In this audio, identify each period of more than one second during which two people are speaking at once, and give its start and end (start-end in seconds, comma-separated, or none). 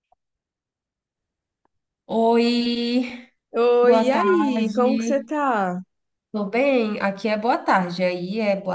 3.8-5.3